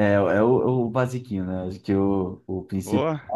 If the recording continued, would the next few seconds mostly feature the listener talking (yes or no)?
no